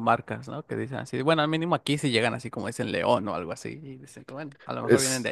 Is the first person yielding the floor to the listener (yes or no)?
yes